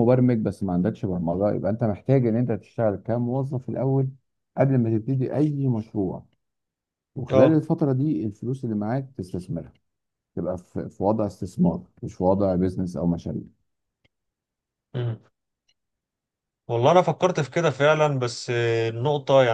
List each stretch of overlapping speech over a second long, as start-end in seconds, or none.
none